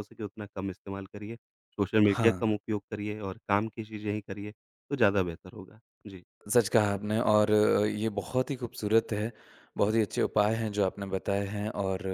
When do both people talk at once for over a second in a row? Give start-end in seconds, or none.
none